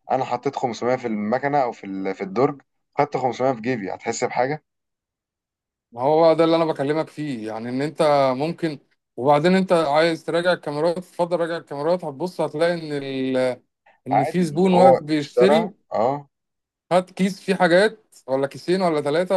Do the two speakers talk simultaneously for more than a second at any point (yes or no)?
yes